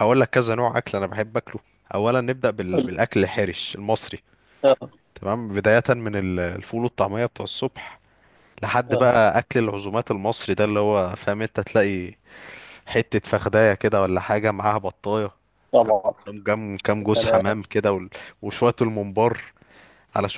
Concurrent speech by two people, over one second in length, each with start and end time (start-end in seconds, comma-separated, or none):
none